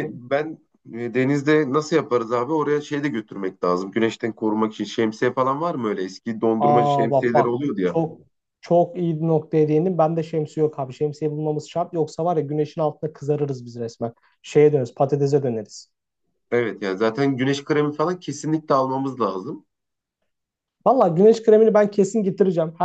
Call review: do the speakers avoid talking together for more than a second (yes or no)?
no